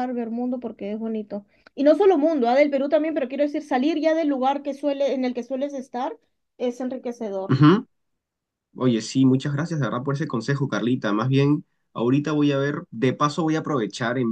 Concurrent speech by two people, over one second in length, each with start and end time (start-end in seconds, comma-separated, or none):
none